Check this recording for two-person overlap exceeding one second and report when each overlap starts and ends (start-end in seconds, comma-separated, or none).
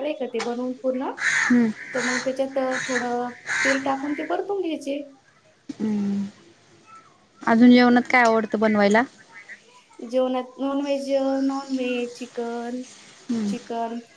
none